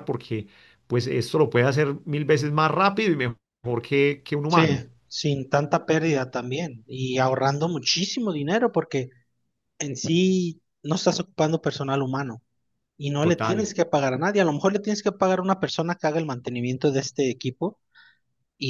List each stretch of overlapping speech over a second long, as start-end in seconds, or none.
none